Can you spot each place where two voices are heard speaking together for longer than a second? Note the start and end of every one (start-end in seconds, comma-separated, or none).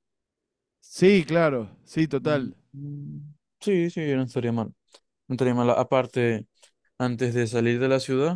none